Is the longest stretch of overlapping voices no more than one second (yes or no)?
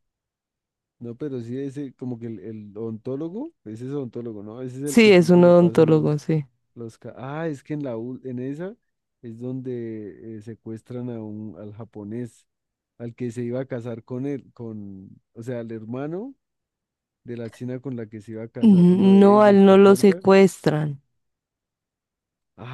no